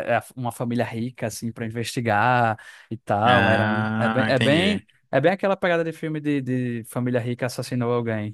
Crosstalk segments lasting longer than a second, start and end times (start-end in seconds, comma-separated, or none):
3.2-4.8